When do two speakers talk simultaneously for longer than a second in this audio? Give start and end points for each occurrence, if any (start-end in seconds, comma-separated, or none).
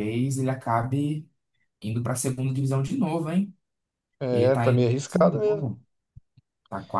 4.3-5.7